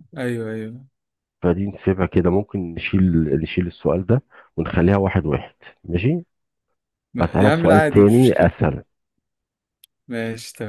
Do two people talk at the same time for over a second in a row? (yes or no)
yes